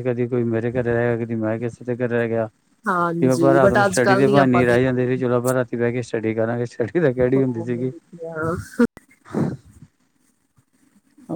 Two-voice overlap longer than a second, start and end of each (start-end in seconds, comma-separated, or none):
3.2-5.1